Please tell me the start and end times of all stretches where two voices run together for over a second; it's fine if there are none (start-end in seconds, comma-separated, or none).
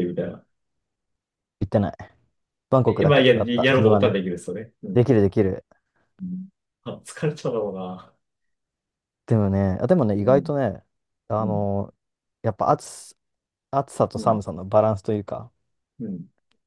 2.9-4.2